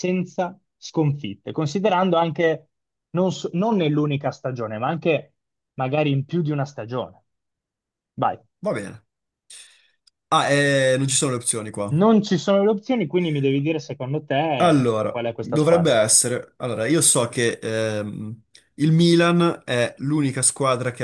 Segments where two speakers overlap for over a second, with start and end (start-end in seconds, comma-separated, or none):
14.6-16.0